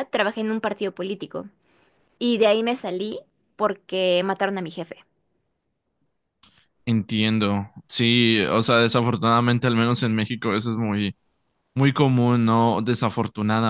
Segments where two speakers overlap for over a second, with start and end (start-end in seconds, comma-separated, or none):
none